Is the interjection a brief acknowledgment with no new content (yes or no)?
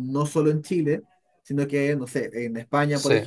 yes